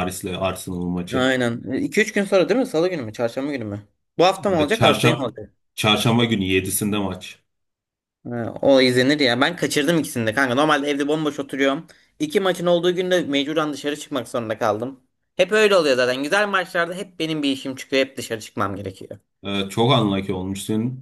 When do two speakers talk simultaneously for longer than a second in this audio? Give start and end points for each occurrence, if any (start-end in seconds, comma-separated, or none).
none